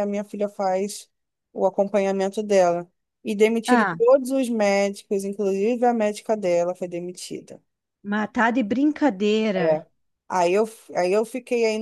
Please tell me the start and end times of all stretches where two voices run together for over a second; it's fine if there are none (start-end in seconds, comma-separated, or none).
none